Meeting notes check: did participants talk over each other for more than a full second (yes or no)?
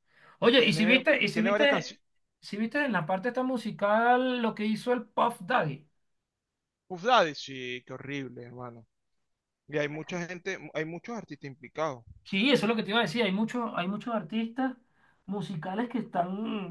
yes